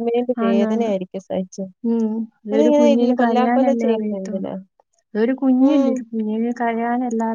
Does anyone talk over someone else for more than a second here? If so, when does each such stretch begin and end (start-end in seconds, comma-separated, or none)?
2.5-4.5